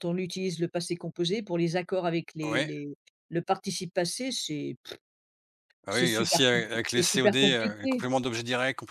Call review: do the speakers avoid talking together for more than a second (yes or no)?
no